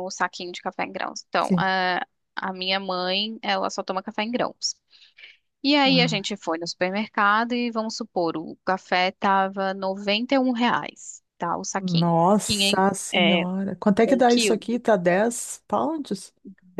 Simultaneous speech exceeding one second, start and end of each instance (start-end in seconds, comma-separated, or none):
11.8-13.4